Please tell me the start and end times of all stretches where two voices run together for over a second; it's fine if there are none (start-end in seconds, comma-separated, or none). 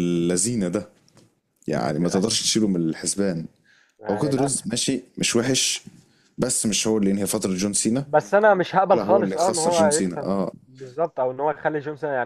8.9-10.5